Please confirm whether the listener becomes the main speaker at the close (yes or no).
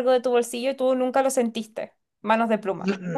yes